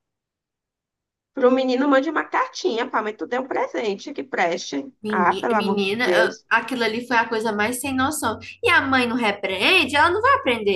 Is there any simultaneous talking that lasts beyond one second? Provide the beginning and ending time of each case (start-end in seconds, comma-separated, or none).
5.0-6.5